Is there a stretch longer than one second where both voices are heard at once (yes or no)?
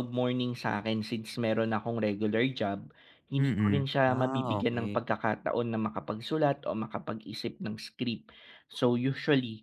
yes